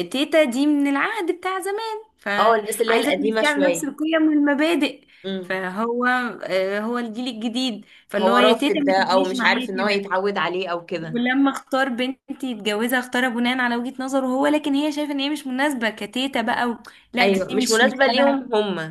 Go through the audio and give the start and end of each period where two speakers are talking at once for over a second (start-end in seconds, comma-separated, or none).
2.4-3.9, 8.2-10.1, 17.2-18.4